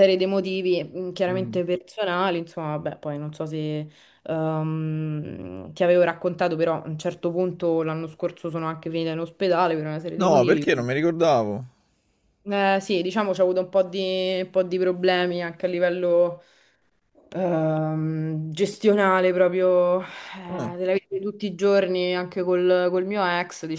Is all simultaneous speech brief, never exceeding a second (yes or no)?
yes